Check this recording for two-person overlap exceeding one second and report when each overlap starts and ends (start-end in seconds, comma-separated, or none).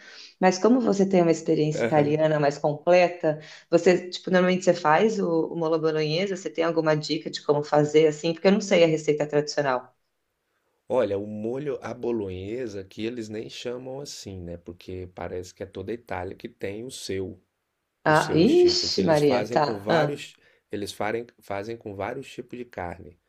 18.1-20.2